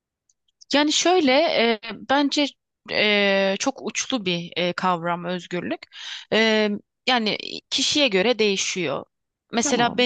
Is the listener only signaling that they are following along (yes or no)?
yes